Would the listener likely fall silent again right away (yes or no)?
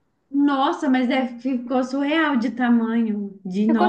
no